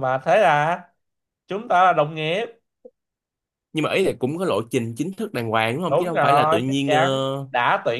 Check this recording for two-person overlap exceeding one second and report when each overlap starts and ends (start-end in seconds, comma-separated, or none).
5.9-7.5